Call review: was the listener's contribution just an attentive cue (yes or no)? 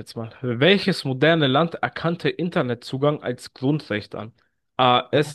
yes